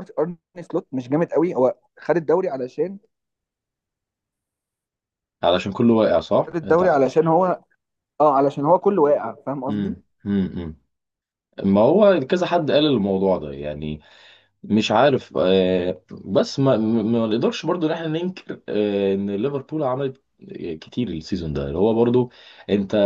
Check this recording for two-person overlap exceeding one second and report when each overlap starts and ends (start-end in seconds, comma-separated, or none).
none